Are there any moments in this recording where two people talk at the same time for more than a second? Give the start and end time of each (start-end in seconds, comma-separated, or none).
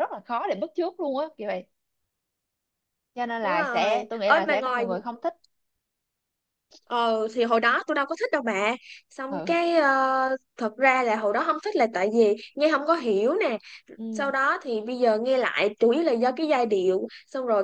3.4-4.8